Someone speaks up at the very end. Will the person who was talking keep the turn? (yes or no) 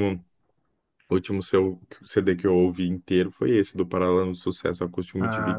no